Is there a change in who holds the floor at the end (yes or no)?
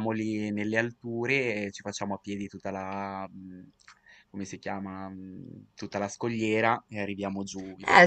yes